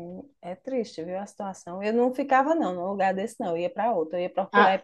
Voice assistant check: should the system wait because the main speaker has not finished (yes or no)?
yes